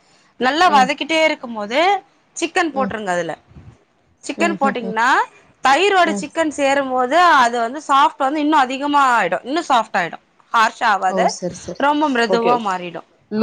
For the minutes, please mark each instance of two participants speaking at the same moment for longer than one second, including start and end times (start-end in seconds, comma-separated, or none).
none